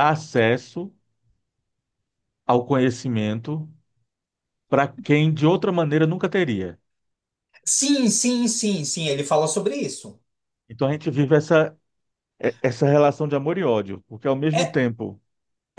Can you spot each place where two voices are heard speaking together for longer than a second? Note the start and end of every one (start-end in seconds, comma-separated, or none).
none